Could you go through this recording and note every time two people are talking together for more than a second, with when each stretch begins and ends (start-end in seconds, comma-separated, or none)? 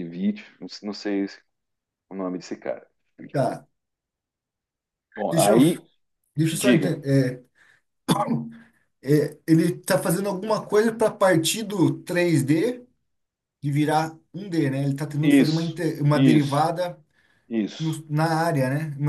15.2-16.6